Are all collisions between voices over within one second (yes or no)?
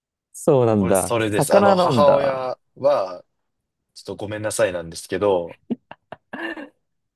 no